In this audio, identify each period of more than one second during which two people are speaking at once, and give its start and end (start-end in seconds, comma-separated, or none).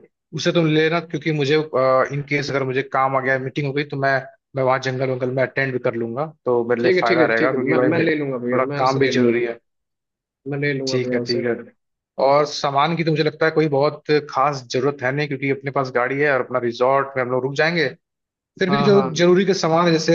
6.8-9.3